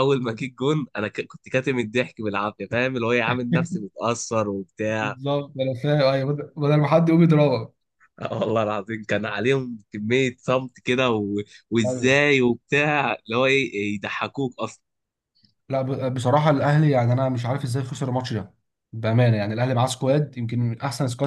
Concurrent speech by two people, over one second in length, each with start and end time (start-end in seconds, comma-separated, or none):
none